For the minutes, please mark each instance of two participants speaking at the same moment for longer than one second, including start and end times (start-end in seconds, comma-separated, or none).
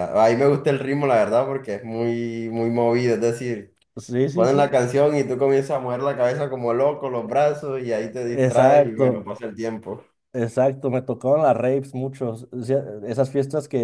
7.9-9.3